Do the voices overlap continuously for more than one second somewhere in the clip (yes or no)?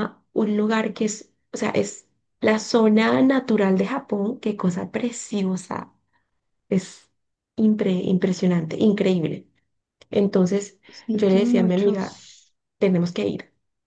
yes